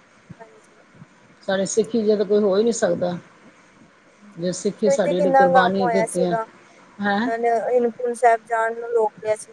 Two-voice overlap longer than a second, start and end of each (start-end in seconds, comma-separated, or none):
4.9-6.3